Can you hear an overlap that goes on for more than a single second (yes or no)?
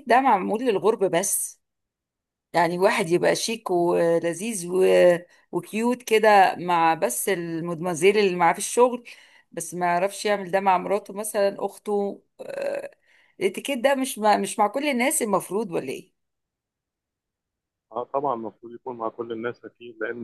no